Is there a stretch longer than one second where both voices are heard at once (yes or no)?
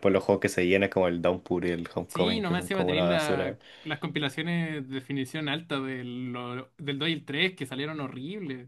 yes